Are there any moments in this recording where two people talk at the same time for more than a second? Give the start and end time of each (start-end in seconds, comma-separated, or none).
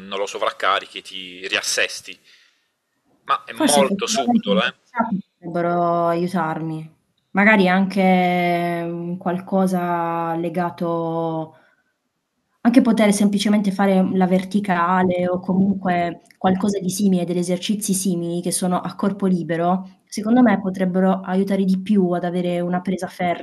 3.5-4.8